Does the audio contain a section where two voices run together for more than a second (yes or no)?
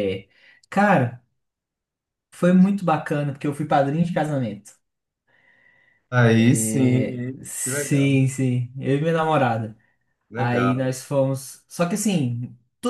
yes